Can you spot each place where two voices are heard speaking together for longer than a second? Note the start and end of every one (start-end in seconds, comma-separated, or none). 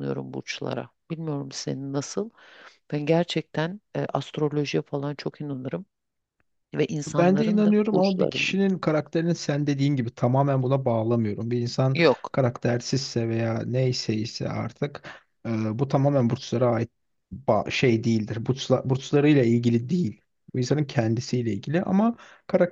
7.2-8.6